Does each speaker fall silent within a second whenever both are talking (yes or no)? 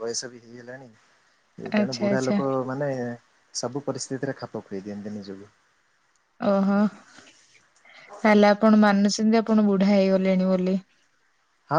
yes